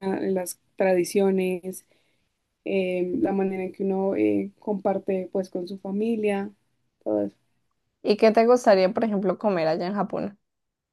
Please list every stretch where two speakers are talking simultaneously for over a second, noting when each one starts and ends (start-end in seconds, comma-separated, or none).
none